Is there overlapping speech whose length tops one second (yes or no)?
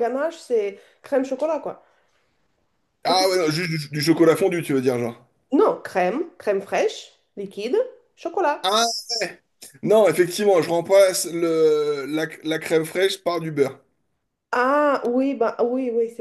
no